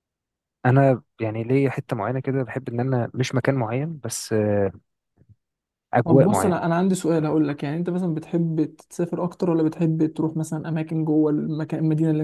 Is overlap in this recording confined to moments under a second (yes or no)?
yes